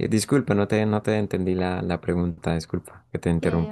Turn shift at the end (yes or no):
yes